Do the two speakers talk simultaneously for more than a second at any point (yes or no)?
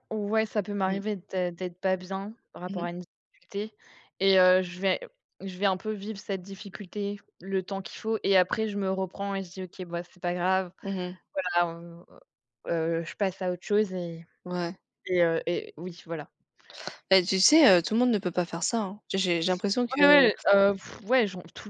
no